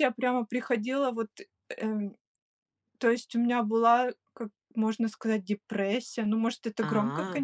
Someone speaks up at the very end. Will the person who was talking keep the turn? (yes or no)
yes